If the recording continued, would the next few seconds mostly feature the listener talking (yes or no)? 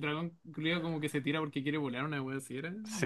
yes